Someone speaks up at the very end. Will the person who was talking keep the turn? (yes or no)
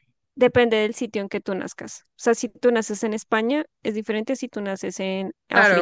no